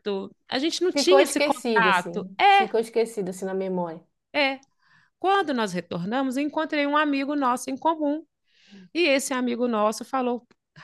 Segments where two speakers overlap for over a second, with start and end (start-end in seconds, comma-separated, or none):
0.9-2.7